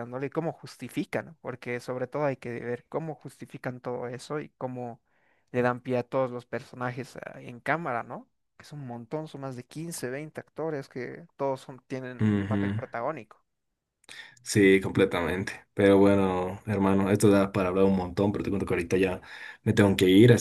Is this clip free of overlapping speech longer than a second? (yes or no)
yes